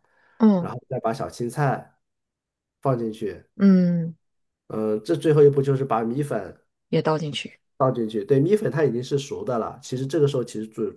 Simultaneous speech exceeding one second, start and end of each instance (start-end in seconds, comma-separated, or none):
none